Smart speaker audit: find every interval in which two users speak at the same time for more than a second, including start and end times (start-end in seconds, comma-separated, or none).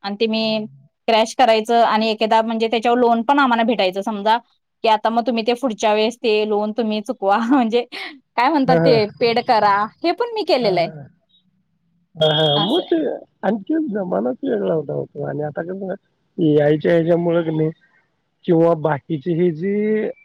none